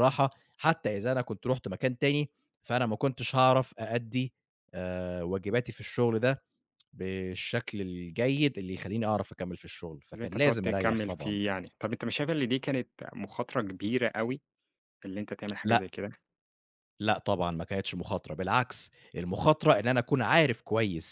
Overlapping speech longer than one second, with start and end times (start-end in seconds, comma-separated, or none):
10.1-11.4